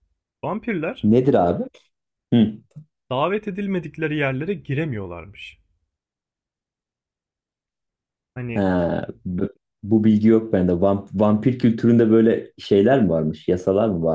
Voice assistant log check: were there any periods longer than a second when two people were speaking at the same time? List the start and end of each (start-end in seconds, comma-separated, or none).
none